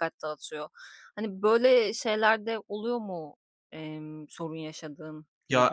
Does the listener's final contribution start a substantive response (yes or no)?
yes